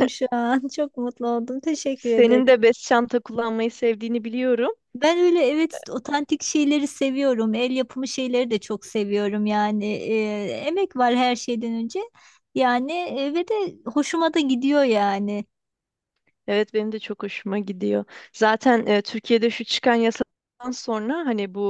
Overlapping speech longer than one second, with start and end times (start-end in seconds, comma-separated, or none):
none